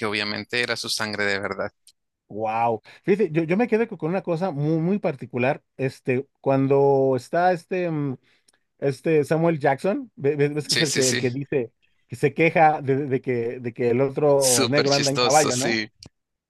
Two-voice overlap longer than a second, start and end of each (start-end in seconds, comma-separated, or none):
14.5-15.8